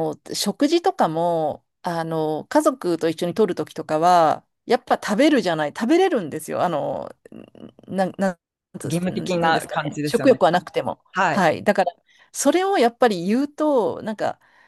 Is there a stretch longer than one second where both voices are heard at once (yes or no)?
yes